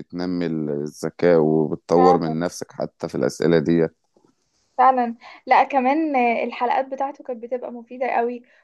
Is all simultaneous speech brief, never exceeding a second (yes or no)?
yes